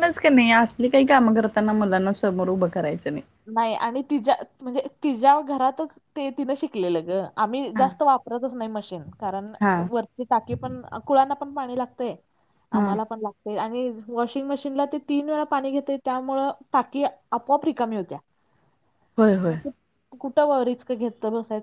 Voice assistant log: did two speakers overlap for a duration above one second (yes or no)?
no